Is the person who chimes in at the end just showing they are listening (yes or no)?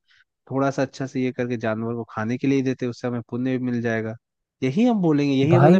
yes